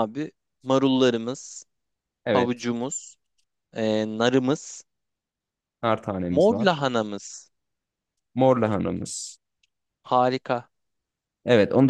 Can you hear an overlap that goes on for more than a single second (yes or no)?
no